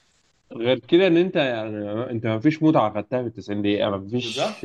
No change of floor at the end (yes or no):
yes